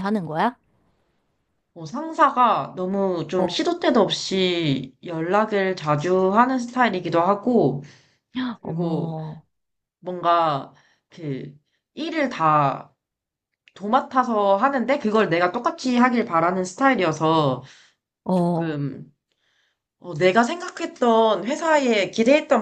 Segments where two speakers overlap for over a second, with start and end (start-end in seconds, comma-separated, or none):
none